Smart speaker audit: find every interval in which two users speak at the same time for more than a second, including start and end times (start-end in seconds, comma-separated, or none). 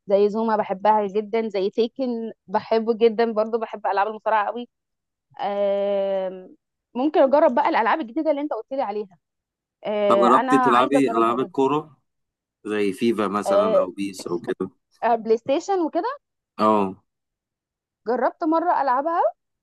10.1-11.6